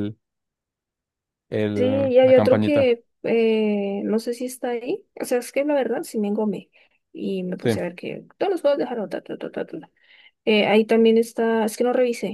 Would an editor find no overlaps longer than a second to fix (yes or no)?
no